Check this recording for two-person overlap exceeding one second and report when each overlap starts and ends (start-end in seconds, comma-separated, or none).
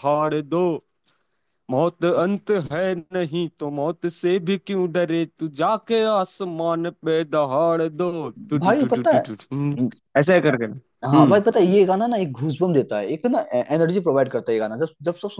none